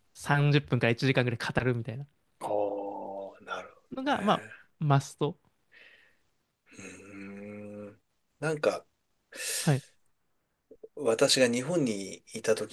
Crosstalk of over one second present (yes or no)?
no